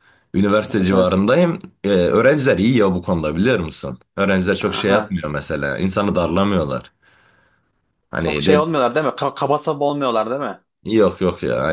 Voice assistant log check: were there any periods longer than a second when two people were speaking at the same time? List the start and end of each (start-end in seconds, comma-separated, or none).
none